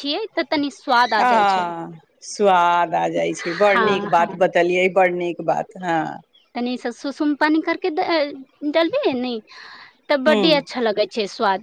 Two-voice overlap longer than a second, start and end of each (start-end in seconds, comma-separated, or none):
none